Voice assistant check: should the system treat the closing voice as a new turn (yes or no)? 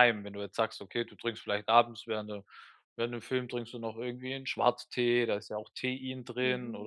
no